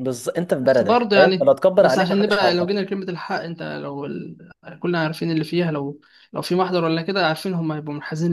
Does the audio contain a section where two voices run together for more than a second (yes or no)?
yes